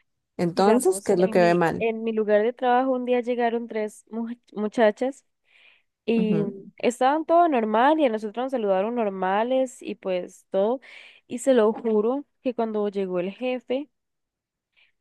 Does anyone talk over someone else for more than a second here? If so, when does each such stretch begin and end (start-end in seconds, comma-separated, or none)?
0.5-1.9